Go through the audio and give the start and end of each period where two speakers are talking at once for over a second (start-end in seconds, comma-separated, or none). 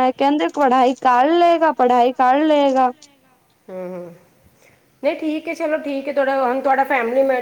none